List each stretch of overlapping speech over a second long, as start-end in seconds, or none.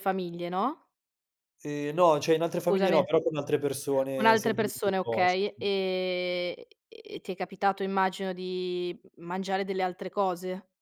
4.1-5.7